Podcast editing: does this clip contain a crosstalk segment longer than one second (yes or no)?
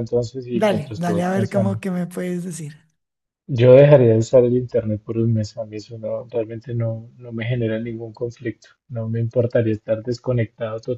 yes